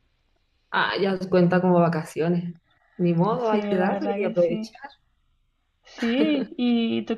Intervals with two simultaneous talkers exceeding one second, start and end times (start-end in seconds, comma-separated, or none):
3.4-4.7